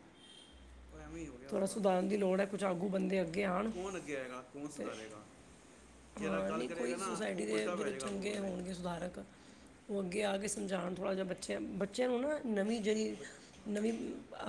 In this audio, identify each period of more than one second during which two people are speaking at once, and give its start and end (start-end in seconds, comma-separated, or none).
6.2-8.5